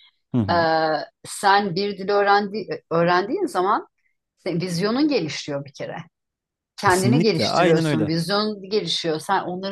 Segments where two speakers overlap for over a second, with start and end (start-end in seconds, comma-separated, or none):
6.8-8.1